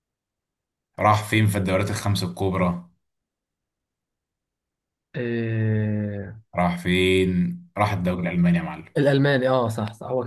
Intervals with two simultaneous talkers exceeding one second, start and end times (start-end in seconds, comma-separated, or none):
none